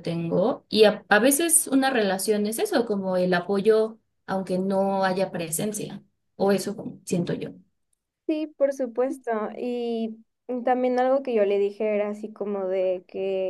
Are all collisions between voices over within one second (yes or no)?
yes